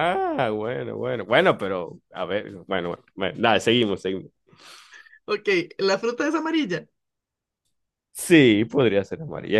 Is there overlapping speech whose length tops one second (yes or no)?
no